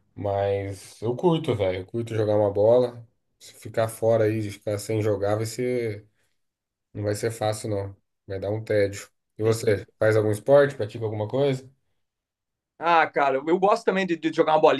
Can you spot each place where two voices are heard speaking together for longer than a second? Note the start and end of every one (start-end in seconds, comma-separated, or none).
none